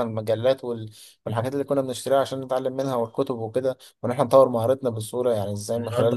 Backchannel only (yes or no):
no